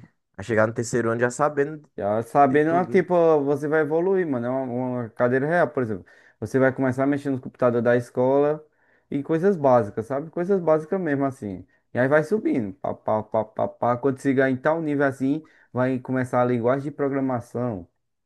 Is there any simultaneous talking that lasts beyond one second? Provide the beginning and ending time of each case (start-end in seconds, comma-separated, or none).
none